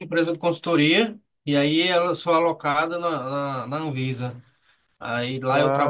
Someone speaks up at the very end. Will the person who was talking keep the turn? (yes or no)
yes